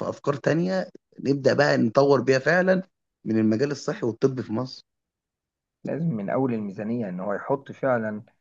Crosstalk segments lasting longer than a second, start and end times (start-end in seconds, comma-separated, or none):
none